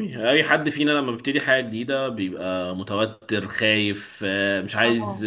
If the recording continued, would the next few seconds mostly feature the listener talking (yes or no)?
no